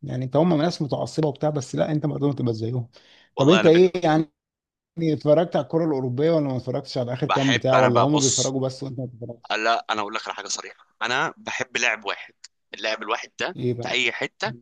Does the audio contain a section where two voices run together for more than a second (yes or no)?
yes